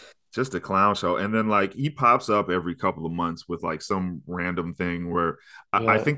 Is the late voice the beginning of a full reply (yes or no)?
no